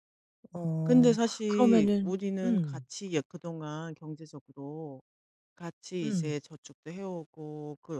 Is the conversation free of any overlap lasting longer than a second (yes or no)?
no